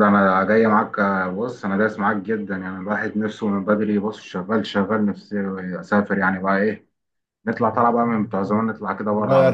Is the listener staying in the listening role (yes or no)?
no